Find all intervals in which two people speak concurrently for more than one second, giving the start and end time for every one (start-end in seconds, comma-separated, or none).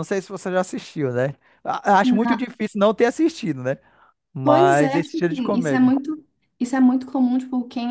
4.4-5.9